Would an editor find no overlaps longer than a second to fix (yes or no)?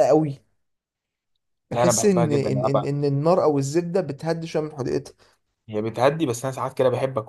no